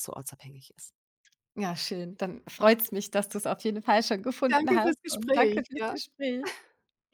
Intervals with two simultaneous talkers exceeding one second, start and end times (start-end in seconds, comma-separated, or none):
4.5-6.0